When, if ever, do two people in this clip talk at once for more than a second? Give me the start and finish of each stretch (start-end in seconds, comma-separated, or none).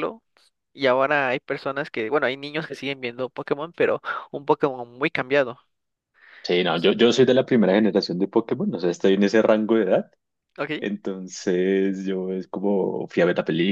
none